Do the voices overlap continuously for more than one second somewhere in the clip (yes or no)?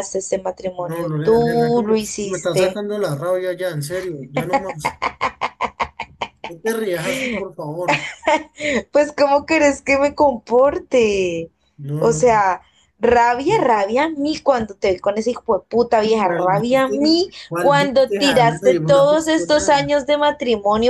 yes